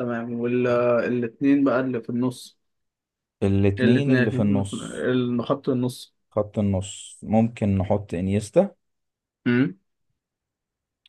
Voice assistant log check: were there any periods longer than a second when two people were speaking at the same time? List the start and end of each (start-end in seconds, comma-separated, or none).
3.8-5.0